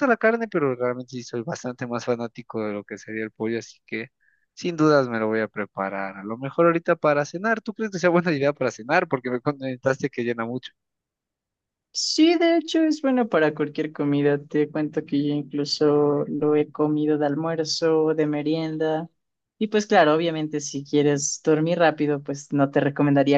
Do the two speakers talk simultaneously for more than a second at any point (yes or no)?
no